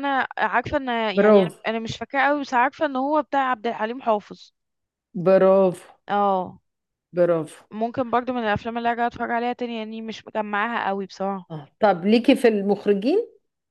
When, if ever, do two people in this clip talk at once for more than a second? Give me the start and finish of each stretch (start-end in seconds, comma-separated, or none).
none